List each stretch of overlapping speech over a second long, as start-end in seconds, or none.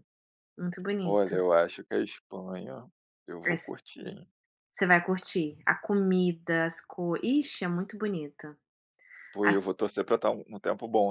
none